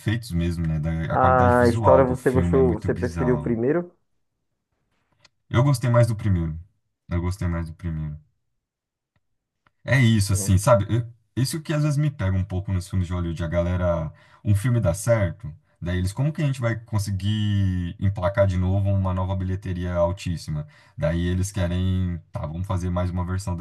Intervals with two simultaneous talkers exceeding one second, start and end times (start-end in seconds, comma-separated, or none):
1.1-3.6